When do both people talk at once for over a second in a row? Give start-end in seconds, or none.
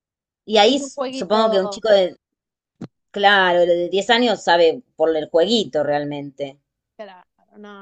0.7-1.9